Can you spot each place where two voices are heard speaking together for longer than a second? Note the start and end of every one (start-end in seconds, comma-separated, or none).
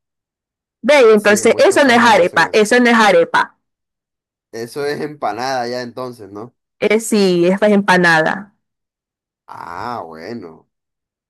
1.1-2.7